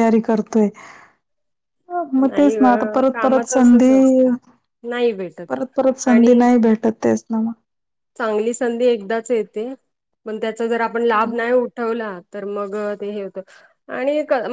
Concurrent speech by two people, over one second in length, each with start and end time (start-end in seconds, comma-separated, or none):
2.2-3.9